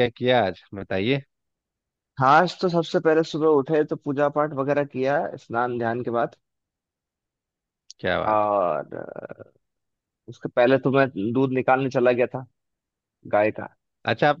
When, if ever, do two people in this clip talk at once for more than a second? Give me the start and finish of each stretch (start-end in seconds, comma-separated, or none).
none